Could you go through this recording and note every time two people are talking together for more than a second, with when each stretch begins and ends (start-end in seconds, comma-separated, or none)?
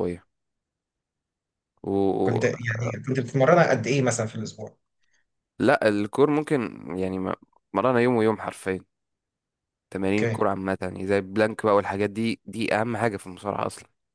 none